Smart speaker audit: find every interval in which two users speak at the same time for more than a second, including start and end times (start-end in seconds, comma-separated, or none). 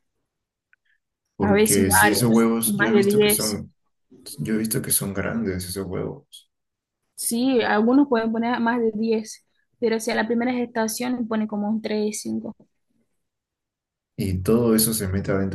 1.4-3.6